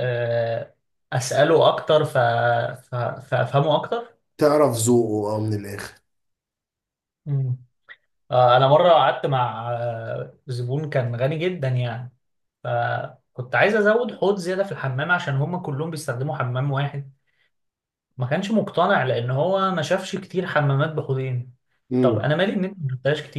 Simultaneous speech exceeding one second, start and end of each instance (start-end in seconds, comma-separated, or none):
none